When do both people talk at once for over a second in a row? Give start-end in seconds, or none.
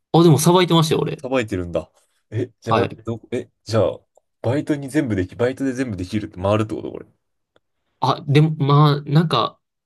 none